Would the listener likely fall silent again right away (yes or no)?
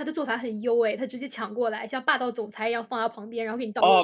no